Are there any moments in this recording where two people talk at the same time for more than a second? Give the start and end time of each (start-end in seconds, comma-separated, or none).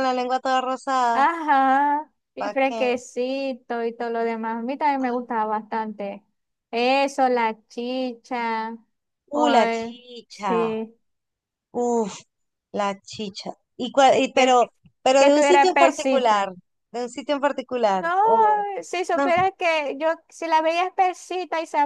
9.3-10.7, 15.2-16.5